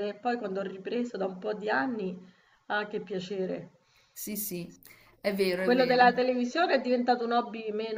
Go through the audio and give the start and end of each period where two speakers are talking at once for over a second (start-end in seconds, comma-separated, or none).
none